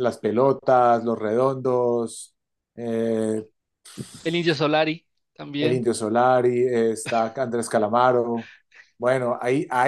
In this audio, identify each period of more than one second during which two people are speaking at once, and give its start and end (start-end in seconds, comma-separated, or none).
none